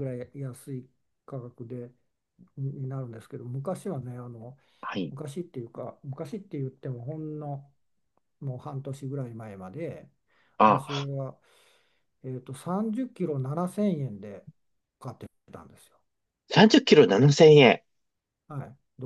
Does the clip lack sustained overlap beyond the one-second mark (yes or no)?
yes